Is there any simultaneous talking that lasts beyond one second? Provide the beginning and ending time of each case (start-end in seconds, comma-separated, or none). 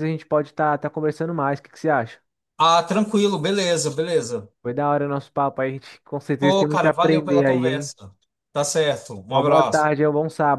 6.4-7.9